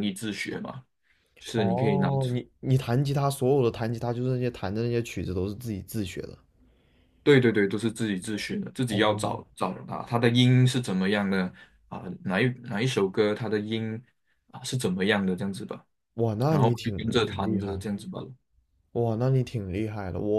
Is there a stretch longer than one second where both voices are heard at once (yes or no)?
yes